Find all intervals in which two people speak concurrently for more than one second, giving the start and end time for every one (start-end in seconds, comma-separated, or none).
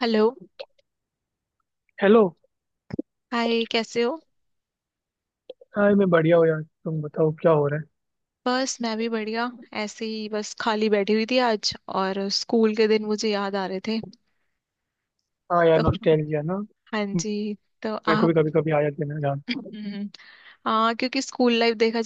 none